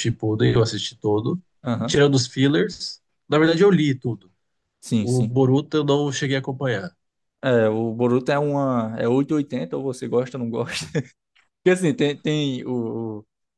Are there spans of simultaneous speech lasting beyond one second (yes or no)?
no